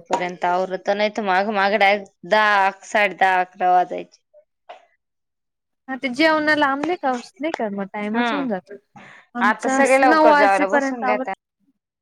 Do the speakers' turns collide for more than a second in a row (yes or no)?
yes